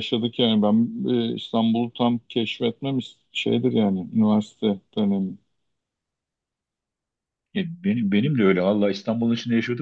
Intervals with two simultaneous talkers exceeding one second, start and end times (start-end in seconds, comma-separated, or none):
none